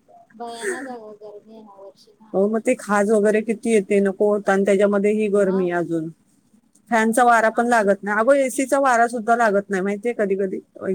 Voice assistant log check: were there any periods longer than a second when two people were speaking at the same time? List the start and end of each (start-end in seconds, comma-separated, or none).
2.4-3.7